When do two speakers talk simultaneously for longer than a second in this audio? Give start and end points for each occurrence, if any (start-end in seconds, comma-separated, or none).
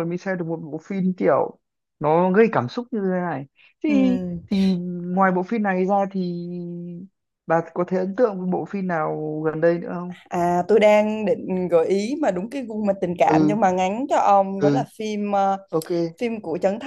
none